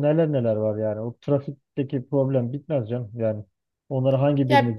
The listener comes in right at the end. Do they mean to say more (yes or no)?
no